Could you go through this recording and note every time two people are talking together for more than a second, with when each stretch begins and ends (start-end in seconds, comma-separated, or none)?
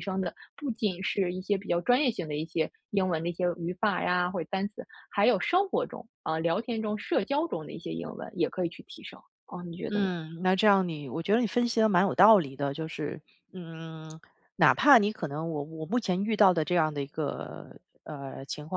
none